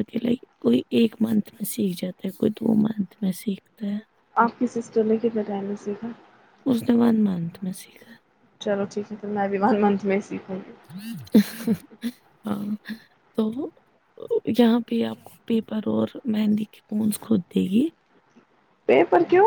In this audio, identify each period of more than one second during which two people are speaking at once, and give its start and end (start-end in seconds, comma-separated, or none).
none